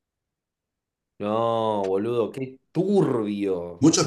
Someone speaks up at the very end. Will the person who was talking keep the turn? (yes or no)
no